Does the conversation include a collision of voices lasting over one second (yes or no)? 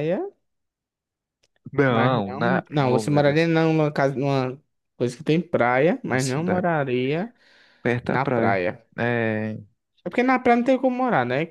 yes